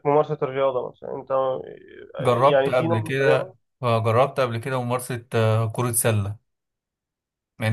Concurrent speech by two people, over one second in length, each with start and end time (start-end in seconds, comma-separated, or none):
2.3-3.6